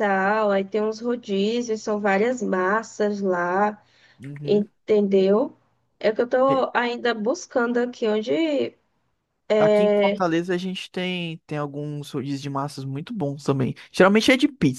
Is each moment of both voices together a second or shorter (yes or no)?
yes